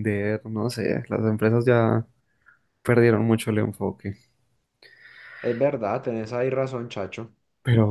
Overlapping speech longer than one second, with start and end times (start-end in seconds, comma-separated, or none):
none